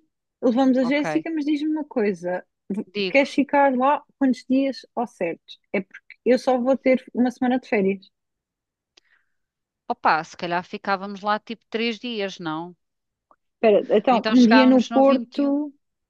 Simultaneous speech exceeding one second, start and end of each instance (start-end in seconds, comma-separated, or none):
14.1-15.6